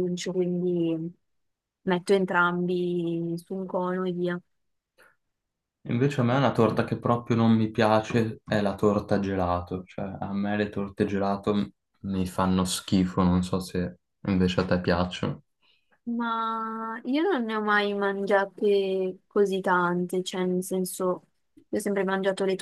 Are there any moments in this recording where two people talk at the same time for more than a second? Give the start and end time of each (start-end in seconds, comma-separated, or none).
none